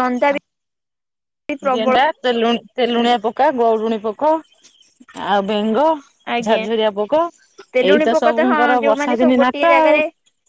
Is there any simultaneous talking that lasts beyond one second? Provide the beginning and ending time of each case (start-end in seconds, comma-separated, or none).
7.9-10.0